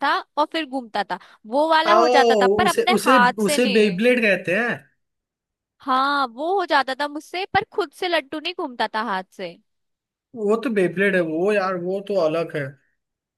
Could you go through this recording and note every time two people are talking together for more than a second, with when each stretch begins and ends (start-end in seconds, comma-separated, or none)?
1.9-4.0